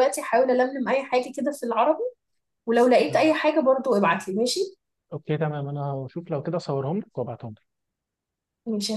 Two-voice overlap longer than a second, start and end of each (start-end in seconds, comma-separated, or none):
none